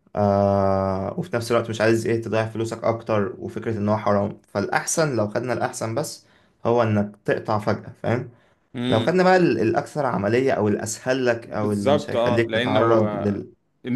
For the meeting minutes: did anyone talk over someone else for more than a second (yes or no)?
yes